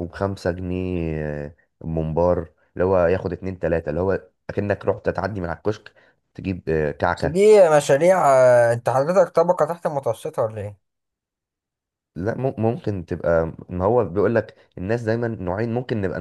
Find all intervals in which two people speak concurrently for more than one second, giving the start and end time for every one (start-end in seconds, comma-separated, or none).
none